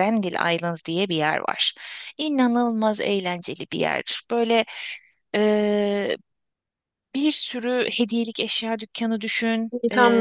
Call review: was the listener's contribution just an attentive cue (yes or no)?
yes